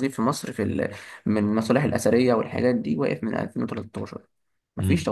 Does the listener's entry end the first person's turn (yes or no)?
yes